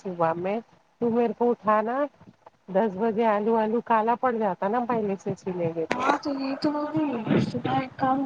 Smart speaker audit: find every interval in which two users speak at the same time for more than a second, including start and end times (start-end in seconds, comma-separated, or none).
none